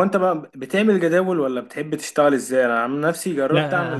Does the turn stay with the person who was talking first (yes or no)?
yes